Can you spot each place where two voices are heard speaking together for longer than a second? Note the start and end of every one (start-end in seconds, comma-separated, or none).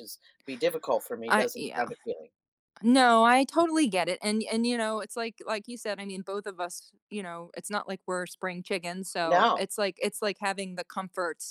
none